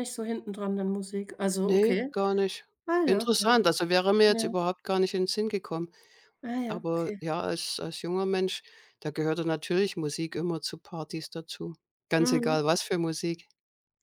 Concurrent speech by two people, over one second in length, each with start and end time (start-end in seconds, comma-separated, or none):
none